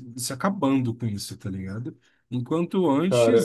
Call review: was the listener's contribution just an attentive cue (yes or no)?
yes